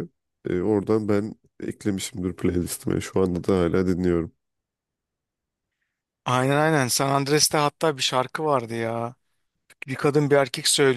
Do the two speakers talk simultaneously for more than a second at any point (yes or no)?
no